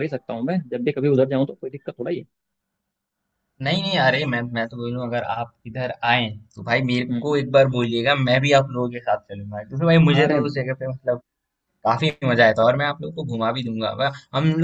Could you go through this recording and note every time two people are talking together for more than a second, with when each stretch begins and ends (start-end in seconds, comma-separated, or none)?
none